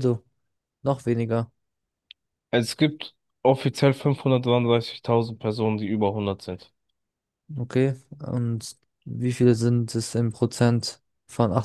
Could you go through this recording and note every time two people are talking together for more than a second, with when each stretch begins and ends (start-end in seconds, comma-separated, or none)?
none